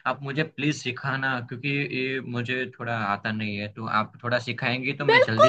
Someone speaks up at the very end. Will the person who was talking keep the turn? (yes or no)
no